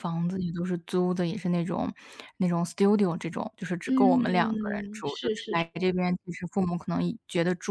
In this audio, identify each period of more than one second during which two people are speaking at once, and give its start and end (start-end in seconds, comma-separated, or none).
3.9-5.6